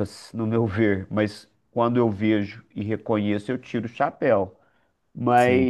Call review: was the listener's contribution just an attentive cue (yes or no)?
yes